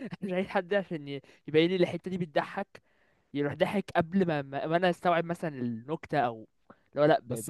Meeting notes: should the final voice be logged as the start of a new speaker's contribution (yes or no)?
yes